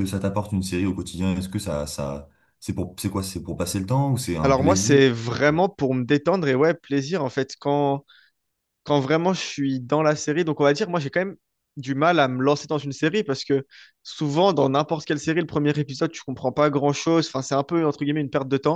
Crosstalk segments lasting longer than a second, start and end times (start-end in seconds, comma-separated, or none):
none